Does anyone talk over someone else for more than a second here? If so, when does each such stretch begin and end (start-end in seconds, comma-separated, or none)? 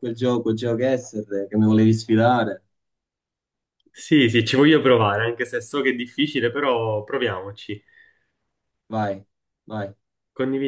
none